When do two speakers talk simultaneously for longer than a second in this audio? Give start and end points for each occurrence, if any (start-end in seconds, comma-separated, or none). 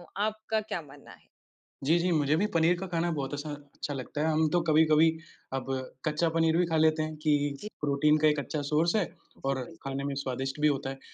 none